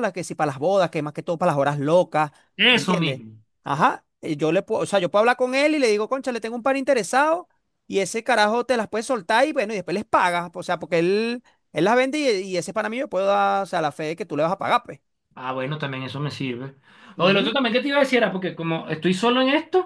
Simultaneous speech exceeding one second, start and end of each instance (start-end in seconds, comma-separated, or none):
none